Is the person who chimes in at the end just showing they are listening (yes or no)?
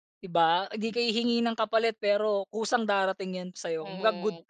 no